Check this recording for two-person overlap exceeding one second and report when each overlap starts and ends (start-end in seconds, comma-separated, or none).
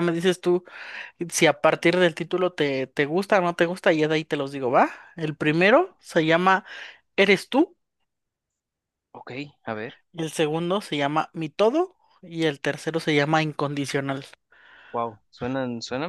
none